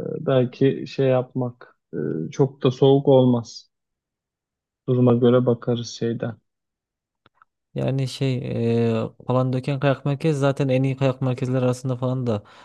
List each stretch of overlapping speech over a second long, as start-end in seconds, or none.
none